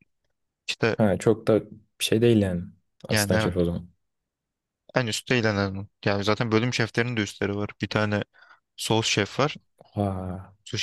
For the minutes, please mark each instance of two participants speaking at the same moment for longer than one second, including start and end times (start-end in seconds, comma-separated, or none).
none